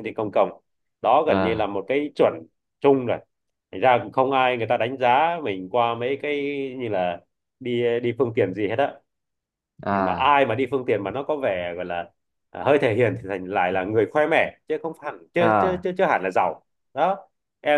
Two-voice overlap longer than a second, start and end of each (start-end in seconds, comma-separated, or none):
none